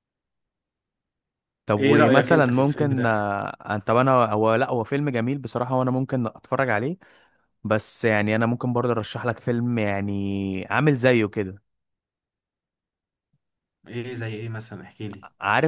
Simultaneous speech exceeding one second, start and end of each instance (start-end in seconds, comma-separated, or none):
1.8-3.2